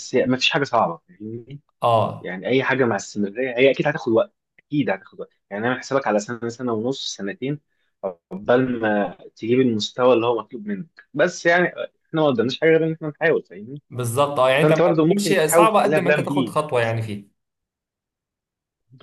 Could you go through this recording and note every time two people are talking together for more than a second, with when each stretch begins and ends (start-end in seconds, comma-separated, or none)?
14.6-16.6